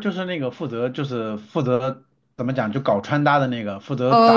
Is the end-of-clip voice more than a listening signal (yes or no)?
yes